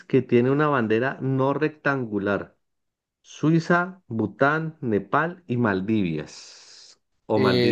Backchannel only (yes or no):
no